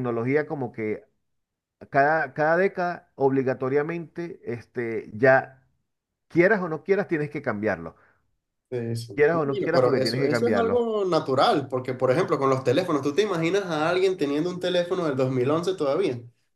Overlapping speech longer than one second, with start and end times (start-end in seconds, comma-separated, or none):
9.1-10.8